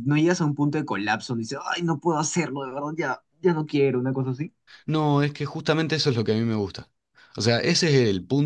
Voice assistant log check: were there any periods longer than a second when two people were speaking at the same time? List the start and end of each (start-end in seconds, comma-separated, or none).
none